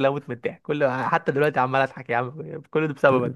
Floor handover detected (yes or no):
yes